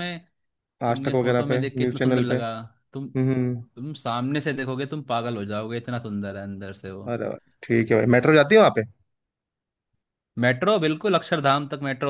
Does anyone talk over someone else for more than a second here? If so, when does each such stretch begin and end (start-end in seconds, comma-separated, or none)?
0.9-2.4